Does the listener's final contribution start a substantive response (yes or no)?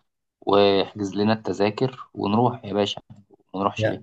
yes